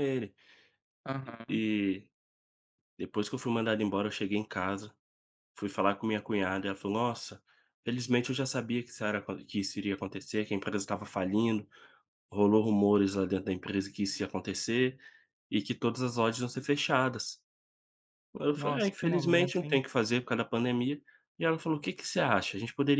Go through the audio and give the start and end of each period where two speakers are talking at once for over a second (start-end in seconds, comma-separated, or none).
18.6-19.8